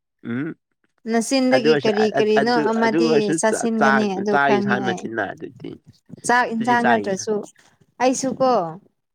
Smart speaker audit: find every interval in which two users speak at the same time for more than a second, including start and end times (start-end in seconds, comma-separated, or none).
1.6-5.0